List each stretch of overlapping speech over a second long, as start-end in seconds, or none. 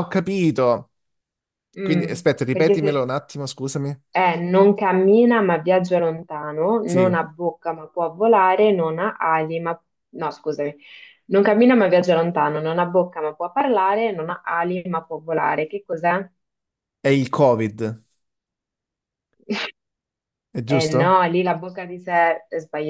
1.8-3.1